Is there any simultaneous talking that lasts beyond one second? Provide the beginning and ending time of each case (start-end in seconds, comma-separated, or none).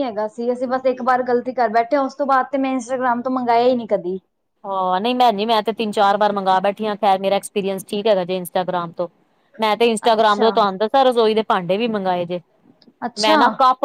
none